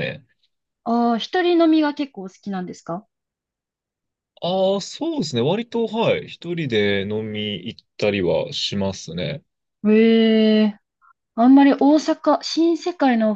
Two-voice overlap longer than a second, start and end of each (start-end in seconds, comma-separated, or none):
none